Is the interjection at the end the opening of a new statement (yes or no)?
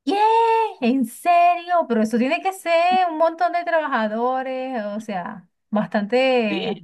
yes